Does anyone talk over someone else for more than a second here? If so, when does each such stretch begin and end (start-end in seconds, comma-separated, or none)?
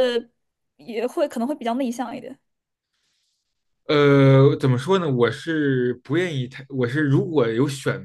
none